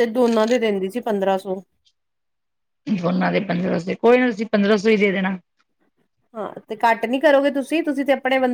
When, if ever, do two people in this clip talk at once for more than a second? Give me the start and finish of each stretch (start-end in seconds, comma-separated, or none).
none